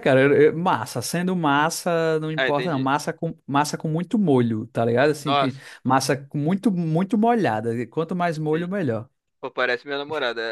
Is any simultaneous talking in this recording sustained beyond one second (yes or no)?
no